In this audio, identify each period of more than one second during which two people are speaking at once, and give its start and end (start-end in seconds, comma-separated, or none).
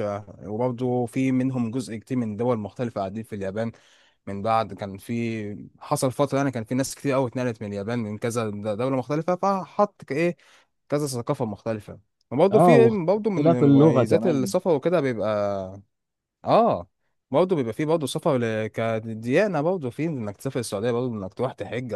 12.5-14.5